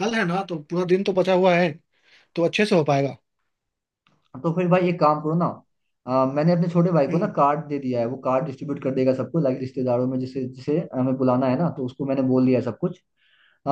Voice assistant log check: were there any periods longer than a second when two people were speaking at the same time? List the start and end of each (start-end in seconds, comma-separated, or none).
none